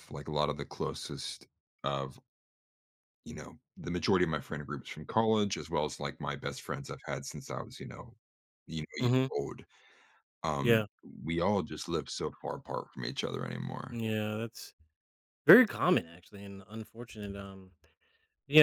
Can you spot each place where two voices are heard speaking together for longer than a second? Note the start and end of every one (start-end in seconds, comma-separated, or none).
none